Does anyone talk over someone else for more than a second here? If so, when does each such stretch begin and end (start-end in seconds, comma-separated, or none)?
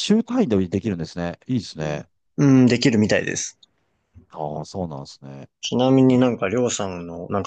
none